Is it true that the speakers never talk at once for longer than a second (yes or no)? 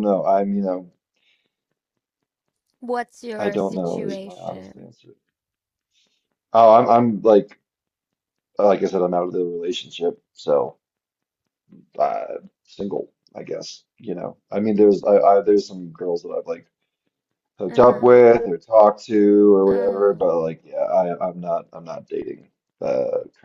no